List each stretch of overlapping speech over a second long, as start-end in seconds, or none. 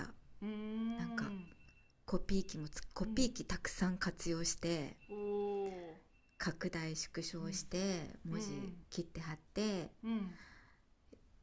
none